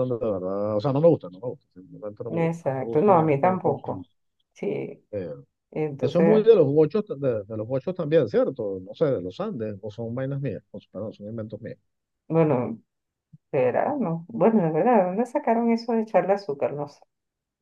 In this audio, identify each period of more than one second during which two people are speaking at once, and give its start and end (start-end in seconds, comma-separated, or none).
2.3-4.0